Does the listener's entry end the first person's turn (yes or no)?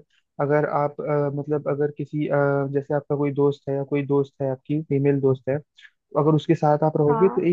no